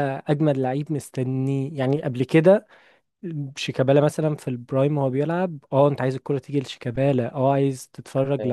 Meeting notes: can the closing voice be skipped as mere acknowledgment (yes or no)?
yes